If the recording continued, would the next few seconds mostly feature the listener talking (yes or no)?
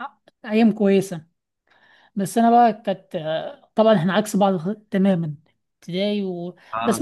no